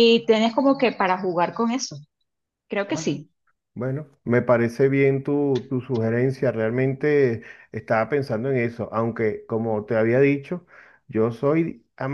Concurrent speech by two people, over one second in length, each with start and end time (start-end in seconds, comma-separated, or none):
none